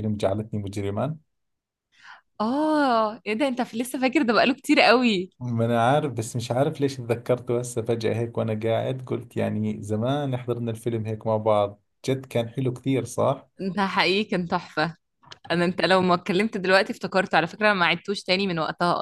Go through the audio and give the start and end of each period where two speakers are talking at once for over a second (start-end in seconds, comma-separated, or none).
none